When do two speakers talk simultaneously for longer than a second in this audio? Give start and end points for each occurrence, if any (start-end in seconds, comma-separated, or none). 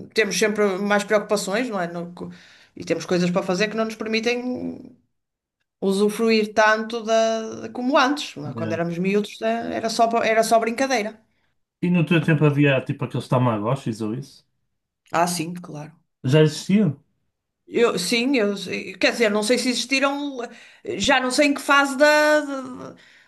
none